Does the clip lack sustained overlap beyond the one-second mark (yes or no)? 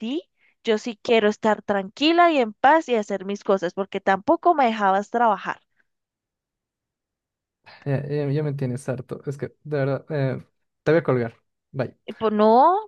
yes